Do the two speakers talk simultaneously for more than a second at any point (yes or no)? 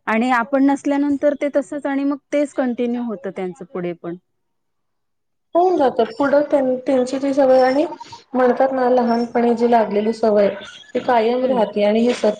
no